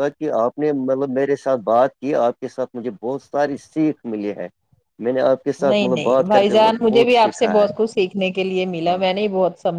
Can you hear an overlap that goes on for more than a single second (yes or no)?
yes